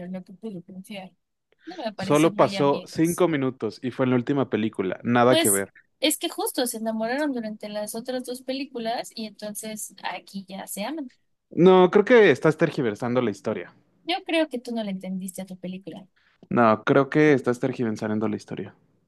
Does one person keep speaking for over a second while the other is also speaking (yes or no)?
yes